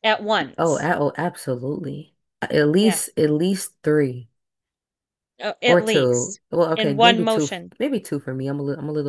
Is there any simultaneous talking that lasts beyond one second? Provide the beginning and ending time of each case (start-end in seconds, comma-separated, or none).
5.7-7.7